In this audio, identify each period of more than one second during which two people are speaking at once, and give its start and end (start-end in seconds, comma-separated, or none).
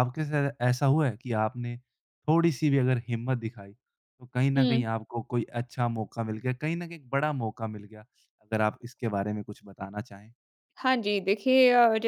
none